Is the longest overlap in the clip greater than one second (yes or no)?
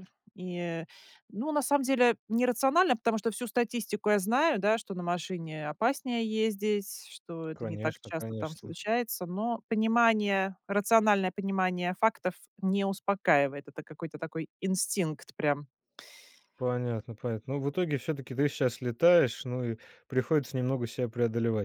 yes